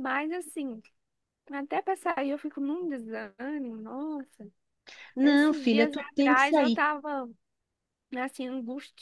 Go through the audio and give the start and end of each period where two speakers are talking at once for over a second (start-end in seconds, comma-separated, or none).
5.2-6.8